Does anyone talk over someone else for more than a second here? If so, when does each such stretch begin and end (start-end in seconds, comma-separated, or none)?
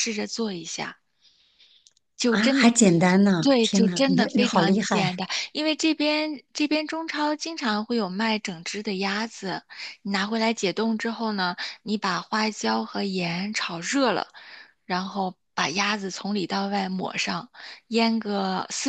3.4-5.0